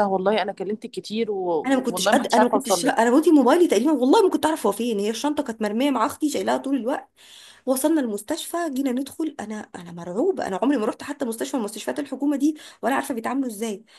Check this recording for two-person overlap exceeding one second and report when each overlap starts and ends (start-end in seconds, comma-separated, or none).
1.9-3.1